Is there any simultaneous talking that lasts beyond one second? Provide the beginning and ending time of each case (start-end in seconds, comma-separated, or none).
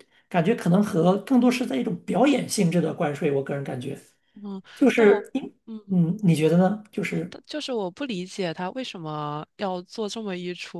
none